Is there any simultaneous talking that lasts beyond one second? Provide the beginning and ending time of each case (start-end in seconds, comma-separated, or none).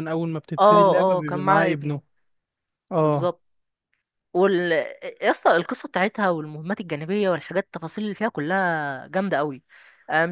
0.6-2.0